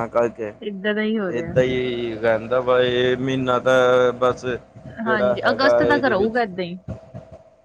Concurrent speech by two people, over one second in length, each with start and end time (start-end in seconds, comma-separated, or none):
5.0-6.4